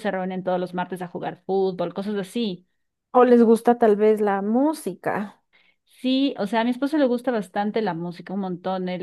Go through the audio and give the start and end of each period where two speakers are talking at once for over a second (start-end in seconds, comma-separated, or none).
none